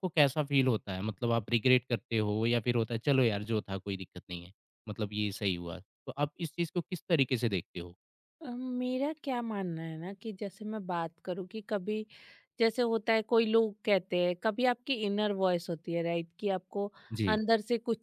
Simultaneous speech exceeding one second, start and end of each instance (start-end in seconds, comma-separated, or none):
none